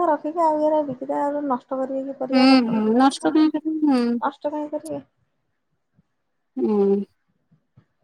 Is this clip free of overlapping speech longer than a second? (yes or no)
no